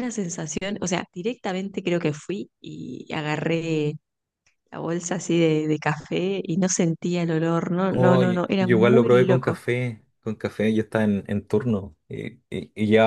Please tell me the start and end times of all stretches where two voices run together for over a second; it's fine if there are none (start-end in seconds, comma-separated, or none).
7.9-9.6